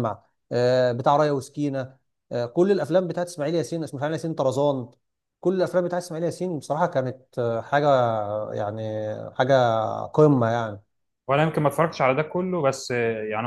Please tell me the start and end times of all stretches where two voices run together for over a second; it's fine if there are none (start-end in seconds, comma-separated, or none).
none